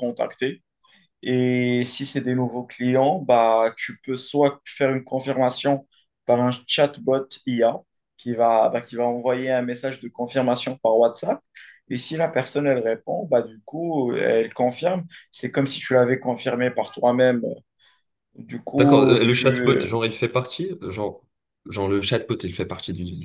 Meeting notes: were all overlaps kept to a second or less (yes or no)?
no